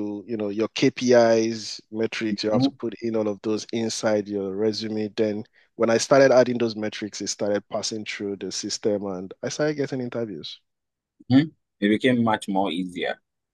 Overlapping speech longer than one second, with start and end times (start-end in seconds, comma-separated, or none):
none